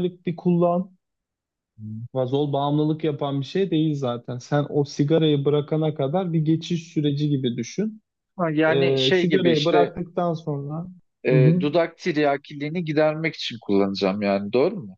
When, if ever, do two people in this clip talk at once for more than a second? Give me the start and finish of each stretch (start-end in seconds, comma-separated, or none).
8.7-9.9